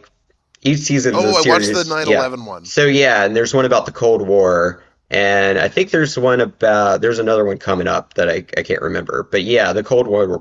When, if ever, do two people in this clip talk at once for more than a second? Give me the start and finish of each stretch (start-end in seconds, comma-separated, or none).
1.1-2.7